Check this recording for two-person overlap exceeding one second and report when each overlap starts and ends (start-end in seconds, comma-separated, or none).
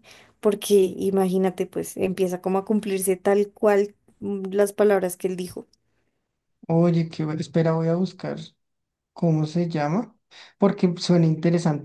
none